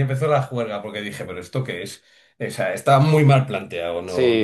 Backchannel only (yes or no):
no